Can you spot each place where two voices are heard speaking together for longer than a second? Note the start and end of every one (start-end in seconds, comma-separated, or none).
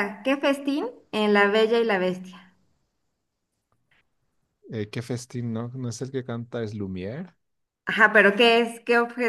none